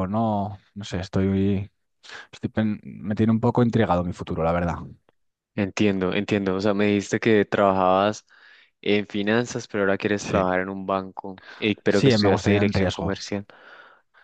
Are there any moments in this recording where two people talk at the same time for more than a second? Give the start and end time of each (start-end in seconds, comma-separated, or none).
11.9-13.1